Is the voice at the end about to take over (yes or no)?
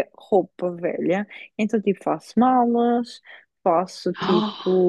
no